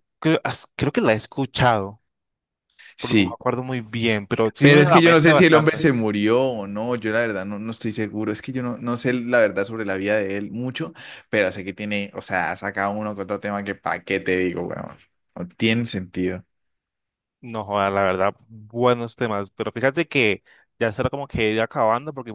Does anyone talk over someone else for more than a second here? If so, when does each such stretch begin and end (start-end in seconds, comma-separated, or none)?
4.6-5.8